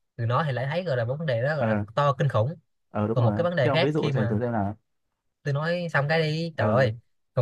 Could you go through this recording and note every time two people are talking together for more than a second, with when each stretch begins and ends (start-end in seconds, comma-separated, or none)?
3.1-4.4